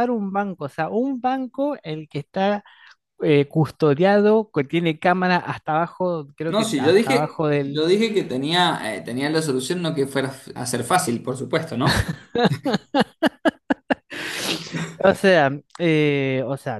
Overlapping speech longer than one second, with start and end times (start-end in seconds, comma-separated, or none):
6.5-7.9